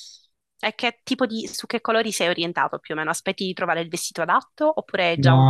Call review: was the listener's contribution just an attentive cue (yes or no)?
no